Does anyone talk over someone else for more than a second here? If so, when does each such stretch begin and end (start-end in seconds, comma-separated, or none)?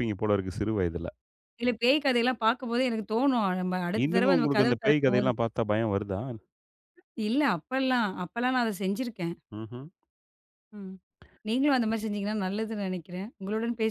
4.0-5.3